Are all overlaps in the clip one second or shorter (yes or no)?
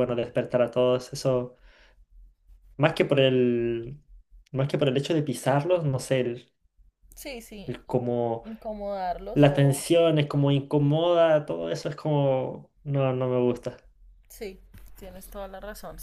yes